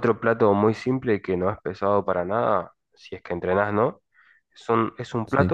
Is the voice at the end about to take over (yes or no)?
no